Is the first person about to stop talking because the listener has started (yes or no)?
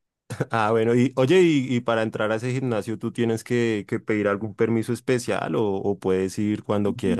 yes